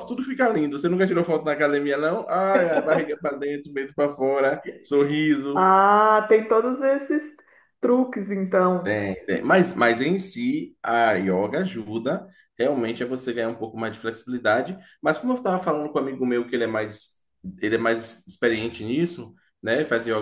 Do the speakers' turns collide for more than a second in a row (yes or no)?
no